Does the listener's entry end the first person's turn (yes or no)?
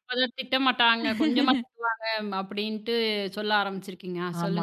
yes